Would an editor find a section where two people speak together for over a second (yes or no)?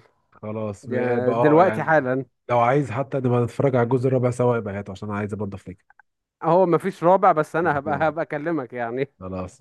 yes